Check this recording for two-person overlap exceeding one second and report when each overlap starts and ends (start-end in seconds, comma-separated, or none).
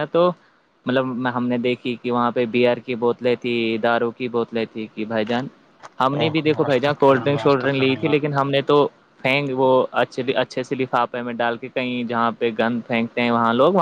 6.7-8.3